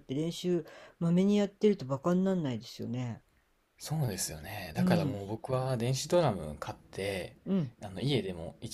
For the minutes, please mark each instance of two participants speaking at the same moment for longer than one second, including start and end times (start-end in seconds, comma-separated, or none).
none